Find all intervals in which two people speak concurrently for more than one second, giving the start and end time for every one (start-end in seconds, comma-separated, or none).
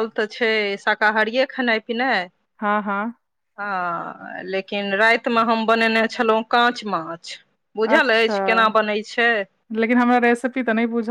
none